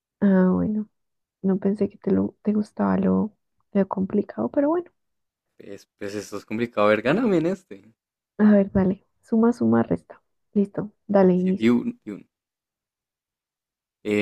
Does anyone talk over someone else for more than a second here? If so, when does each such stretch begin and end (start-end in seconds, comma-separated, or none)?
none